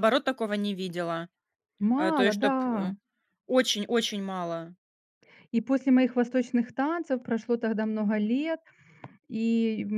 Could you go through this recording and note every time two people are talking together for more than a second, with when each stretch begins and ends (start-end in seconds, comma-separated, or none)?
none